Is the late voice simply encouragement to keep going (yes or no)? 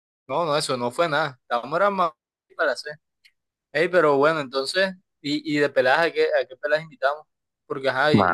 yes